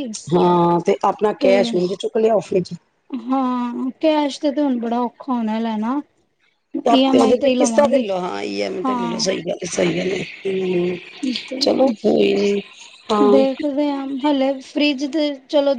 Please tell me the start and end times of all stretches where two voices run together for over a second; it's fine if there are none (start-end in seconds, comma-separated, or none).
none